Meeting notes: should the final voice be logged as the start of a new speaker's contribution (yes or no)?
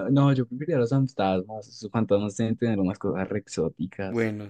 no